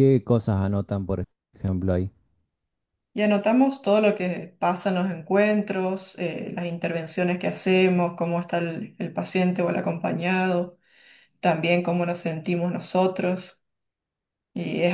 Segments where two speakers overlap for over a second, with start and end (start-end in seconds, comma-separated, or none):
none